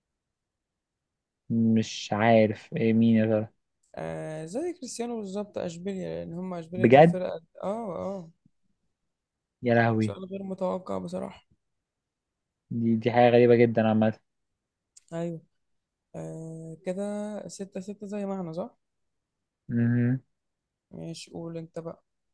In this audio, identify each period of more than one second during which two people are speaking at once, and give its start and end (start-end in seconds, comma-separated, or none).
none